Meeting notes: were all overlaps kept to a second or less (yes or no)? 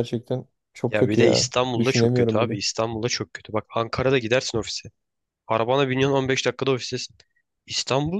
no